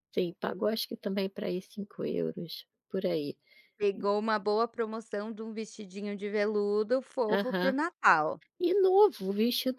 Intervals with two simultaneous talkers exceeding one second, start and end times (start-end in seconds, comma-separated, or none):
none